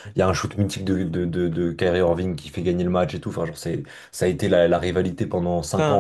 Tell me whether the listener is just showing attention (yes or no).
no